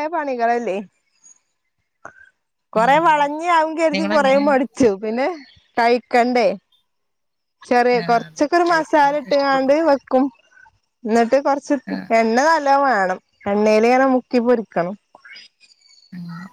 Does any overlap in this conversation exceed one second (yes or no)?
yes